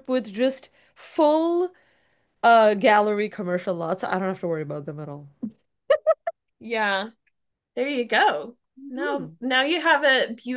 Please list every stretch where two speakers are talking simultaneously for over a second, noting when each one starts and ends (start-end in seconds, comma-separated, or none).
none